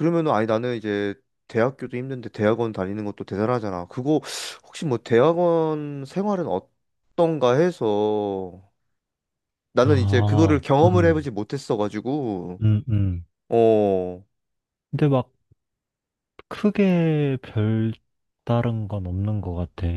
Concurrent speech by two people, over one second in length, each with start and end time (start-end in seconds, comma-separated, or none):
9.8-11.3